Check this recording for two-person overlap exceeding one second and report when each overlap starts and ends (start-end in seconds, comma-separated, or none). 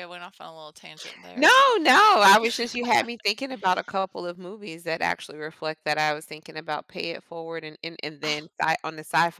none